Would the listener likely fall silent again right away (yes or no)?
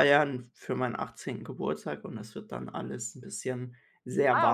no